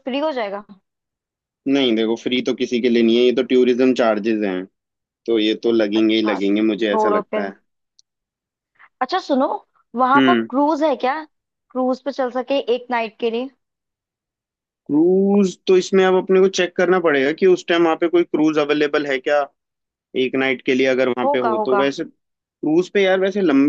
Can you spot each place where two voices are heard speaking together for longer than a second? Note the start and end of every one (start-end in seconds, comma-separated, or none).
6.0-7.5